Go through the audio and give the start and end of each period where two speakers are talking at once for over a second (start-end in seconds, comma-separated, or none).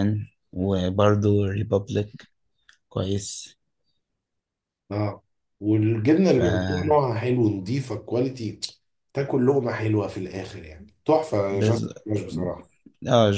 none